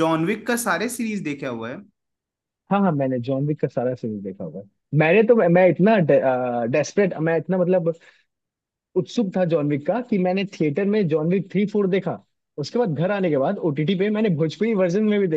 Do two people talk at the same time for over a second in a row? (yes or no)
no